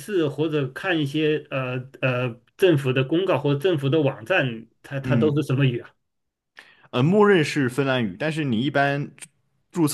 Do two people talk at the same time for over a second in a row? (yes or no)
no